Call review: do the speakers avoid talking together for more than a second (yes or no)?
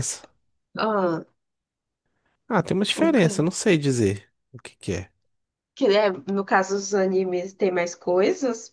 yes